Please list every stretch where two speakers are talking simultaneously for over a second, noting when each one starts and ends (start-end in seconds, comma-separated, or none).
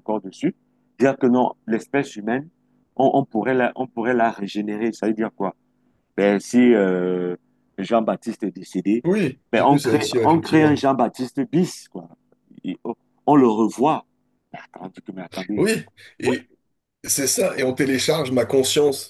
9.5-10.8